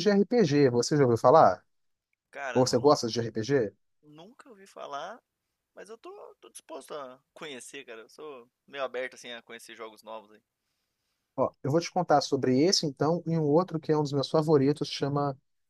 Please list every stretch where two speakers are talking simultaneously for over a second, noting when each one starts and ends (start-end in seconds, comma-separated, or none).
none